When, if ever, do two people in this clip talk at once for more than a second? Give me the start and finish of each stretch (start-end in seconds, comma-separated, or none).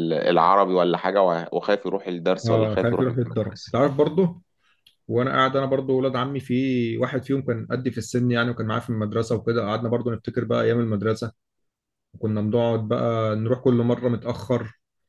2.5-3.8